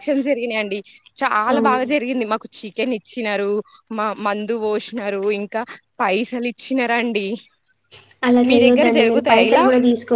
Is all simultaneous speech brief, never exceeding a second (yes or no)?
yes